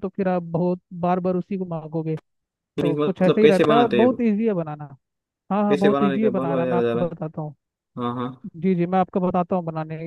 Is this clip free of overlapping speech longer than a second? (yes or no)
no